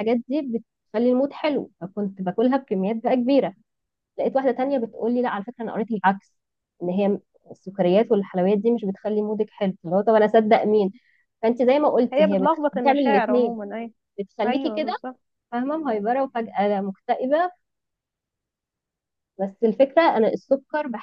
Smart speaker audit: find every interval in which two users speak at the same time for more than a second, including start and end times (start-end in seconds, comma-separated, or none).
12.1-13.6